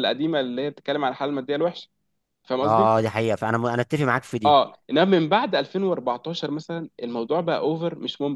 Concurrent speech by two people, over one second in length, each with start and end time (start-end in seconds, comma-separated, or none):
none